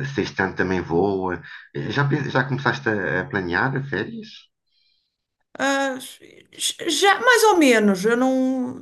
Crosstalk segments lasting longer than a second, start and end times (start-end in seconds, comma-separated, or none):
none